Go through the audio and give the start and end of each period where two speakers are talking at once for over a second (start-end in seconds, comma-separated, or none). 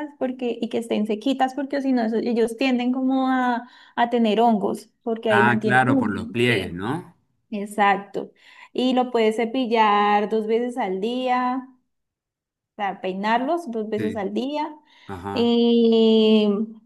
5.3-6.8